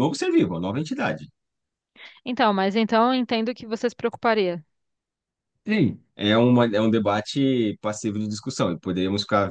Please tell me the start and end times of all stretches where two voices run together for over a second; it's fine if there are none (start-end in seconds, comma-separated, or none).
none